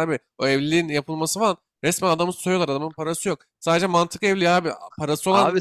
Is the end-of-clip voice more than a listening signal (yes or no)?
no